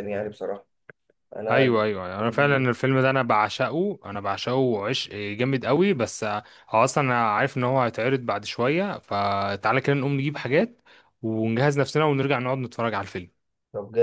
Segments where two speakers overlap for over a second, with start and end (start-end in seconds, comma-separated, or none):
1.4-2.7